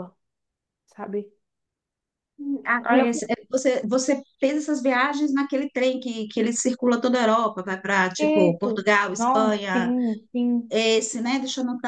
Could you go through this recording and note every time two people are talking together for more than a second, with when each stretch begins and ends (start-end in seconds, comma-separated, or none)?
8.2-9.9